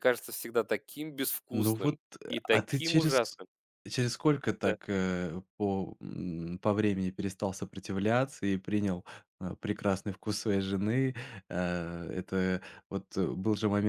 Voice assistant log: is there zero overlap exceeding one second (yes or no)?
no